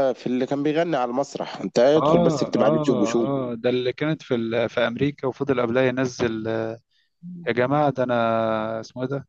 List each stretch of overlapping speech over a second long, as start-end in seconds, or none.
1.9-3.3